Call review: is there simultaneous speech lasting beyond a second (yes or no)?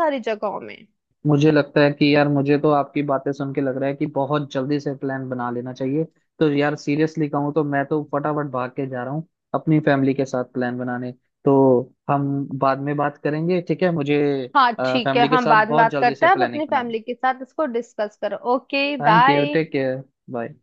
yes